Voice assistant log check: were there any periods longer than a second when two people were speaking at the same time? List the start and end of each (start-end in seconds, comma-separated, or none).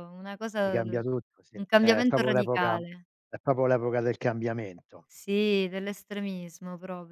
0.6-2.8